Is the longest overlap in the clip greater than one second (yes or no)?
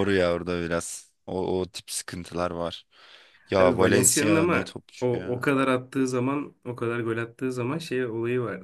yes